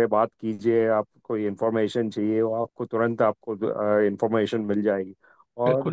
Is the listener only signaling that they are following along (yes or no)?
yes